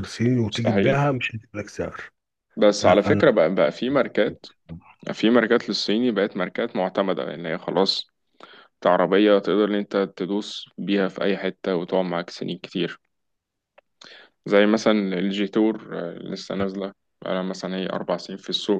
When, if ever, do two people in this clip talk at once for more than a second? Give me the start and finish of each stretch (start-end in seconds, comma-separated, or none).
none